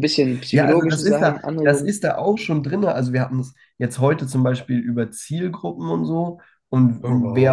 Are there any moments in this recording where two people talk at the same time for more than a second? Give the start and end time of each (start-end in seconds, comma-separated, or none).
0.5-1.9